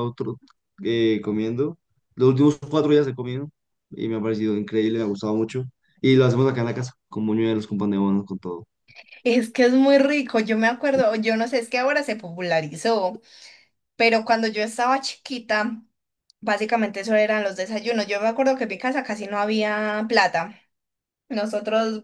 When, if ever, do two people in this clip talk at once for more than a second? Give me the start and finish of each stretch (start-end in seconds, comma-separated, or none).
none